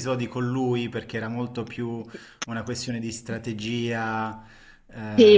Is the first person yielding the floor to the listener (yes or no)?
yes